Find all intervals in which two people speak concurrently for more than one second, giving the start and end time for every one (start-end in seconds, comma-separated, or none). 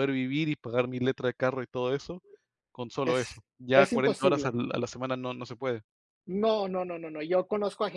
3.0-4.6